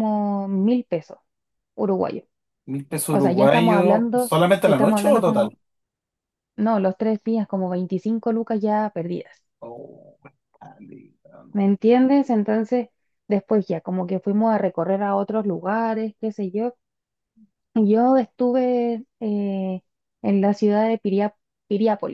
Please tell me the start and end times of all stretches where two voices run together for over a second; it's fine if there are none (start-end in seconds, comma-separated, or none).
3.1-5.5